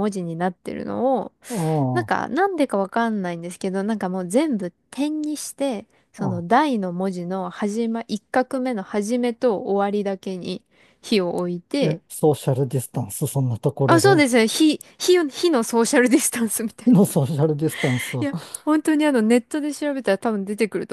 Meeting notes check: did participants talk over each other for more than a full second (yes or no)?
no